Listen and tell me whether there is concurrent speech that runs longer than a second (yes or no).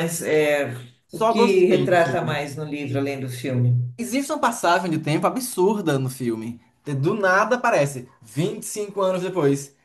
yes